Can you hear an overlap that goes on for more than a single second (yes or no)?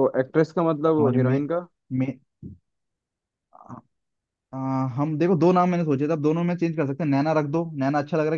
no